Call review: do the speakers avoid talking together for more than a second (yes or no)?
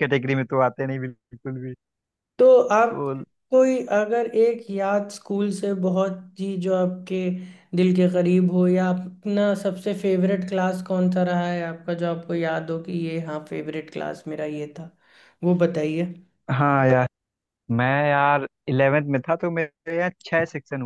yes